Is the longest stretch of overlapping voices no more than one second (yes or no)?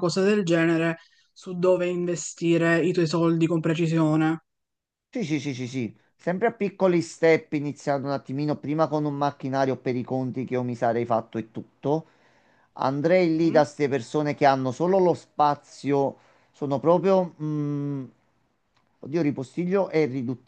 yes